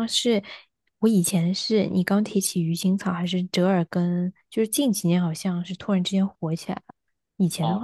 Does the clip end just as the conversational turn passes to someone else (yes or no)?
no